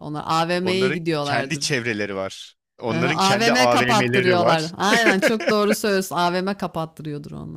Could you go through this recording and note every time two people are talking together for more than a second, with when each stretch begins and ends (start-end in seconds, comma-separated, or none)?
0.6-1.8, 2.9-4.7